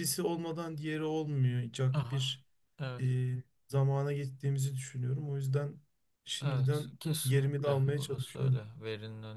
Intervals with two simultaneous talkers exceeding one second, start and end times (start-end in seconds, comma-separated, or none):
6.4-8.6